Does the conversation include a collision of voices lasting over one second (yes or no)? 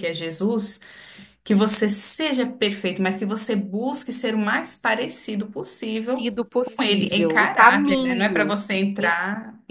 yes